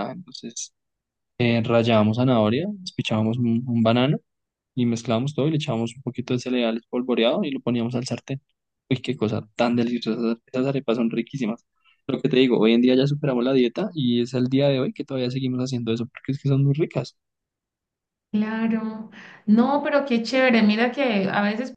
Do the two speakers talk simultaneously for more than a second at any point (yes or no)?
no